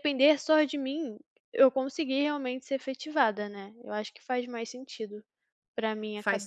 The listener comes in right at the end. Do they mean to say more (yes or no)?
yes